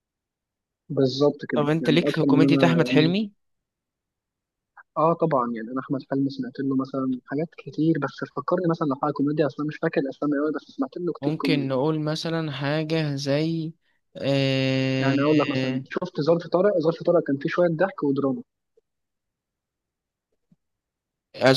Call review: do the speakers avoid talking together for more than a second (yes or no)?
no